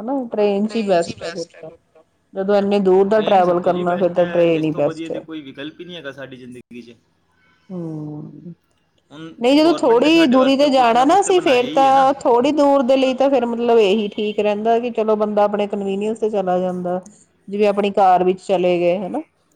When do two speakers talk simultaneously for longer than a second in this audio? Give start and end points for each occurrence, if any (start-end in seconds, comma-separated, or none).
3.1-5.2